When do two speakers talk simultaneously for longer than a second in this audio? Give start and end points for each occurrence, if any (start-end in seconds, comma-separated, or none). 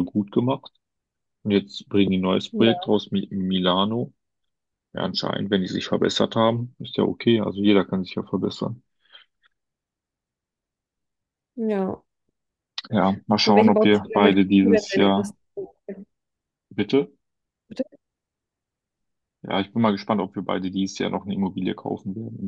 13.4-15.3